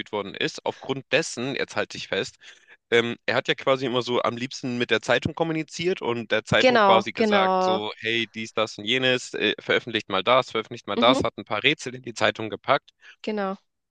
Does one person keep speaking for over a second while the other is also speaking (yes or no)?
yes